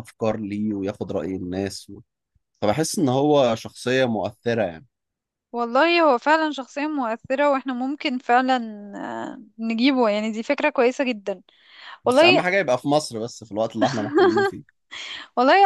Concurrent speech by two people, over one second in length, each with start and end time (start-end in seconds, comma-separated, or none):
none